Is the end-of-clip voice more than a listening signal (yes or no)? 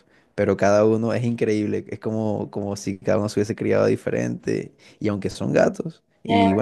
no